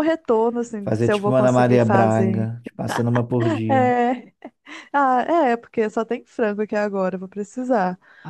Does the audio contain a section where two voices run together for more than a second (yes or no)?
yes